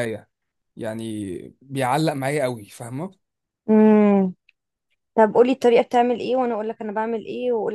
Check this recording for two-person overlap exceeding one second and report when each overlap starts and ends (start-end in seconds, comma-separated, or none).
none